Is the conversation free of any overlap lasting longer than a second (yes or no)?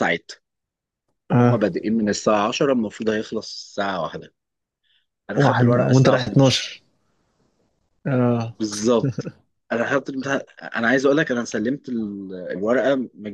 no